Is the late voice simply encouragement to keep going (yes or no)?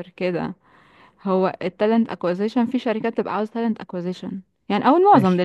yes